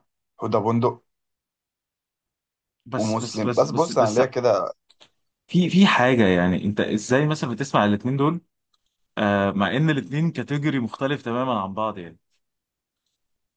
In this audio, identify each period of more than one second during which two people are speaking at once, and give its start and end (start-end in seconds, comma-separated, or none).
3.0-4.2